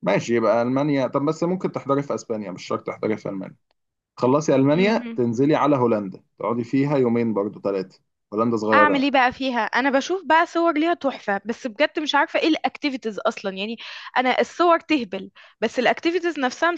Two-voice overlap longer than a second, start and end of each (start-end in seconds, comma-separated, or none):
none